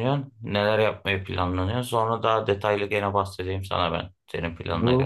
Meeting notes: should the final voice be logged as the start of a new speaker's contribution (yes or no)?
yes